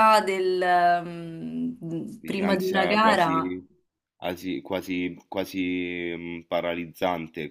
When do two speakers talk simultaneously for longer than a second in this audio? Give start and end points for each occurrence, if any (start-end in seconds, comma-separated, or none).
2.2-3.5